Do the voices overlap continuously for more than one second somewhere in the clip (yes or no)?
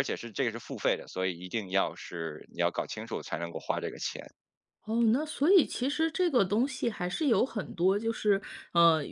no